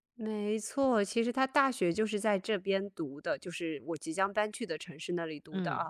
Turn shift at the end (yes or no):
no